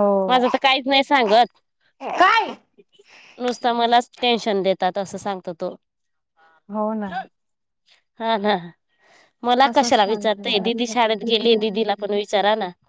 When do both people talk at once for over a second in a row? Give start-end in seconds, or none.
9.7-10.8